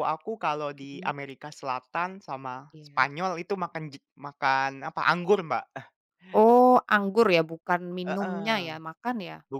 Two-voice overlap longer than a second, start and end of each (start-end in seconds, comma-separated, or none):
none